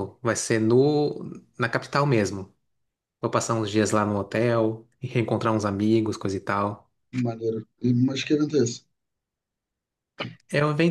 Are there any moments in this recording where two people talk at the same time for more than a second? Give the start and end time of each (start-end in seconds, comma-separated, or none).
none